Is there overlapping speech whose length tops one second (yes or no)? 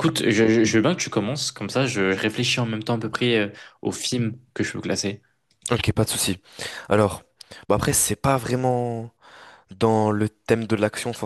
no